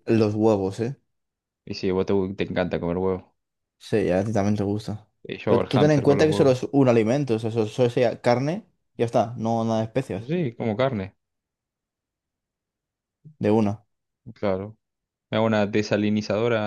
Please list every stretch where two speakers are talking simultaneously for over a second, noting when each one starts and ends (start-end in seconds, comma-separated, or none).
5.5-6.7